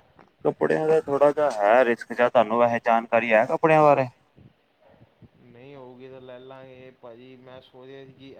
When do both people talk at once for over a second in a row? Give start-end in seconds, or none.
none